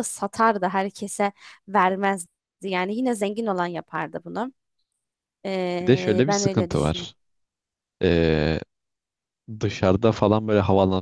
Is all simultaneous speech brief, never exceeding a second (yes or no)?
no